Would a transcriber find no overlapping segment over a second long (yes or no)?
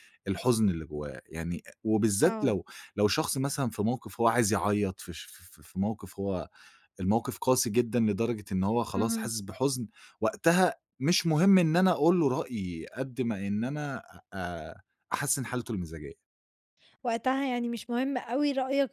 yes